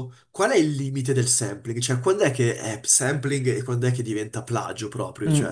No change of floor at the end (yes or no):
no